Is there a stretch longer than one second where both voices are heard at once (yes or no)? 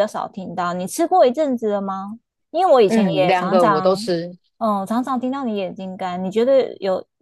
yes